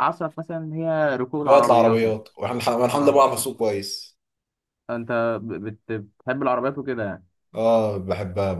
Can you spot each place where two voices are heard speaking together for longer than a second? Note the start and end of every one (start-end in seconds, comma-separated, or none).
none